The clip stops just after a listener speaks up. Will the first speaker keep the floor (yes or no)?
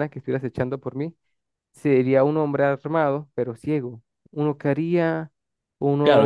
no